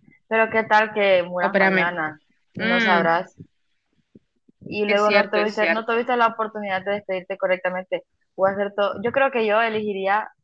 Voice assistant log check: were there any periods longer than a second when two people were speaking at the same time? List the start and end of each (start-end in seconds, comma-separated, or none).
4.8-6.0